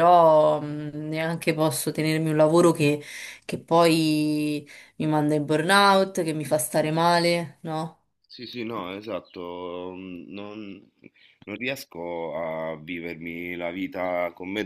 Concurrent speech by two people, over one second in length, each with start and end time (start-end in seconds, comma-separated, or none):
none